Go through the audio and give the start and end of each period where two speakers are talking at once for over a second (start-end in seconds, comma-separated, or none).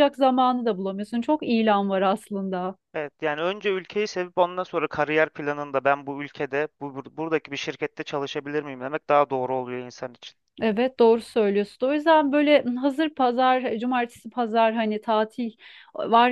none